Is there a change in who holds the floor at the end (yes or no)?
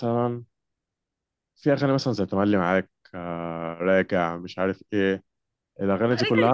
yes